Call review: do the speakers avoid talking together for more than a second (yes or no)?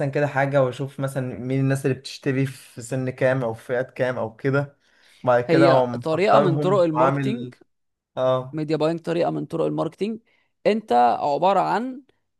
no